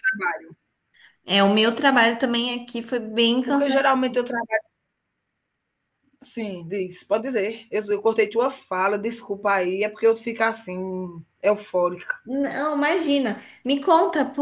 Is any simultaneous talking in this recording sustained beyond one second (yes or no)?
no